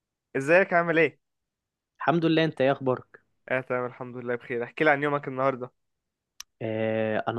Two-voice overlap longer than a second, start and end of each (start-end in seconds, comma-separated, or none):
none